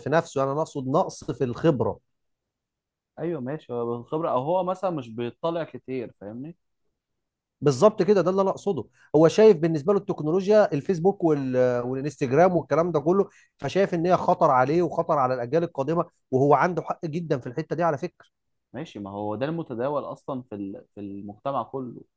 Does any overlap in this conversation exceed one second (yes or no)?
no